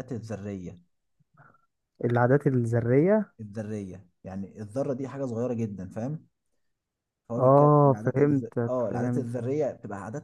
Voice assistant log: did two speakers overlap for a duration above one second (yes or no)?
yes